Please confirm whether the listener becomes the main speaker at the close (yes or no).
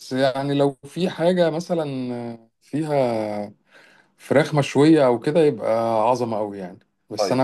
no